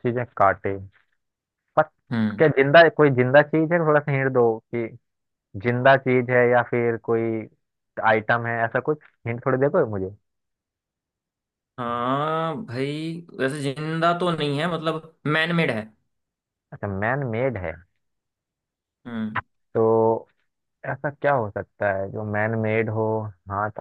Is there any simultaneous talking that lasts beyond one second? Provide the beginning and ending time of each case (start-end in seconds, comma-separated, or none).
none